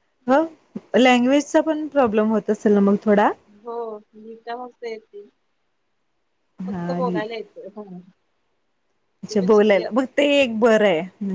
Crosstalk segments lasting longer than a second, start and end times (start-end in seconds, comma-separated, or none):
none